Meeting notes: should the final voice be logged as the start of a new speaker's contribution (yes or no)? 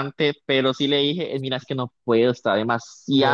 yes